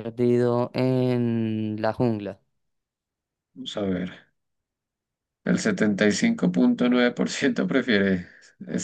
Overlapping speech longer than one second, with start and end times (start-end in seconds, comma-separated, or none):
none